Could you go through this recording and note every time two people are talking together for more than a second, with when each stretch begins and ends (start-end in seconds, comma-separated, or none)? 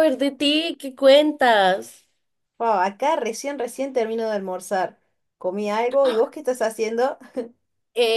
none